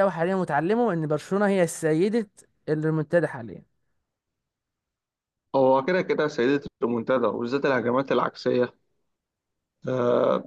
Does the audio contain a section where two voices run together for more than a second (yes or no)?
no